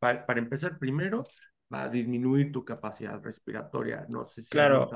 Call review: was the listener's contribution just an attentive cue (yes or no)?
no